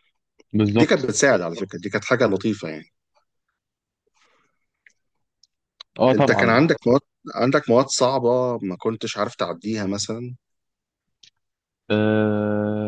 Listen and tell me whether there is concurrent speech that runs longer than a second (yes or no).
no